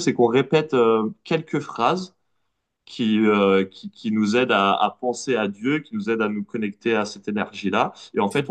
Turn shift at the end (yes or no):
no